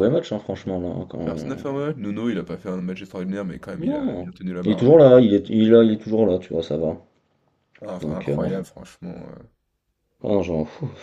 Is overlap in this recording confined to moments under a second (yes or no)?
no